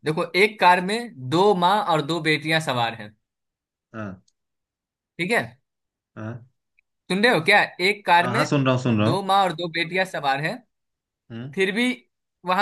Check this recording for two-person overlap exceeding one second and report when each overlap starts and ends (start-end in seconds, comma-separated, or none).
none